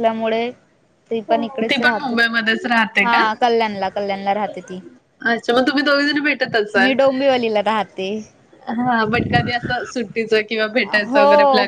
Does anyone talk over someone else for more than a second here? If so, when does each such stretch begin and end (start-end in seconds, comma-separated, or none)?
none